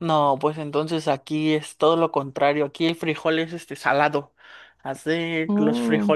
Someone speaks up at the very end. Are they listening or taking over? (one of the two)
listening